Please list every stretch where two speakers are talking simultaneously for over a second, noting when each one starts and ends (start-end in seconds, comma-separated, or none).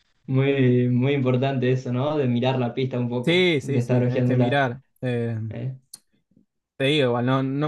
3.2-4.6